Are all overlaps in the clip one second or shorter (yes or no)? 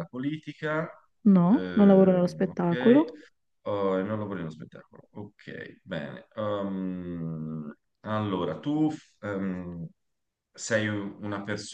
no